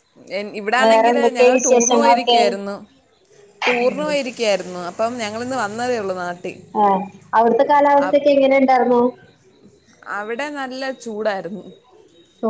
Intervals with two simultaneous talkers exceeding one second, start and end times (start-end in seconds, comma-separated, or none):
0.8-2.4